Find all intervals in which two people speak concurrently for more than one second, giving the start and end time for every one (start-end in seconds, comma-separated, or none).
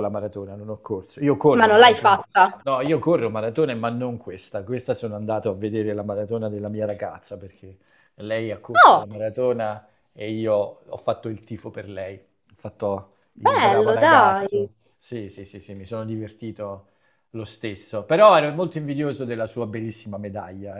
13.4-14.7